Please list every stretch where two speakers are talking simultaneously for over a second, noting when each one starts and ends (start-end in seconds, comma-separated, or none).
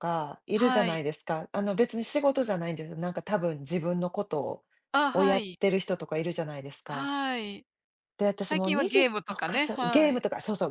8.4-10.2